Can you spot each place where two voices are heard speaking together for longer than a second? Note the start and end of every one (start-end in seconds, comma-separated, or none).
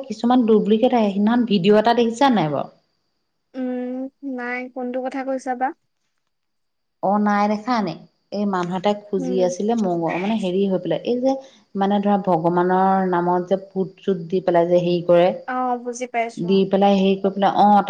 none